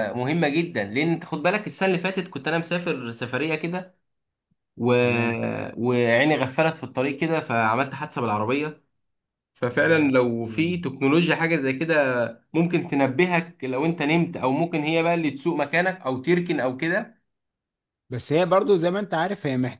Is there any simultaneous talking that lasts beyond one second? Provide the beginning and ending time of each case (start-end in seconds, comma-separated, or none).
none